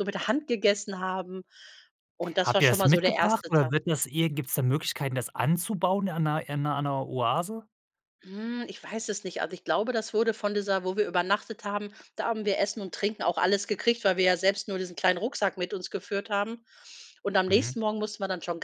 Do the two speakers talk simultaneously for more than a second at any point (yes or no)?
yes